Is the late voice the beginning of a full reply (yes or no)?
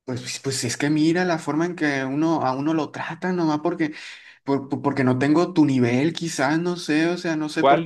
yes